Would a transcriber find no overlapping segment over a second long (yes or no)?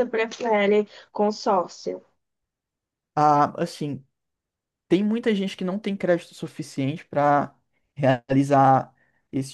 yes